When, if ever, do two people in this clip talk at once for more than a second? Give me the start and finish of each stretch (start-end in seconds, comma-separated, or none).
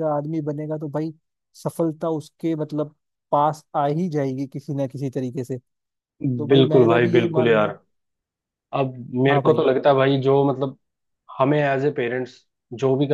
6.5-7.7